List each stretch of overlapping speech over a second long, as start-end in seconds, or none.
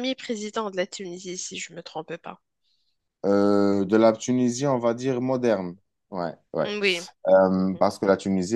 none